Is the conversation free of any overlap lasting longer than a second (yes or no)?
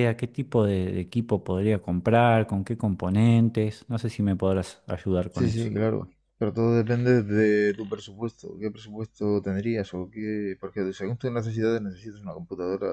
yes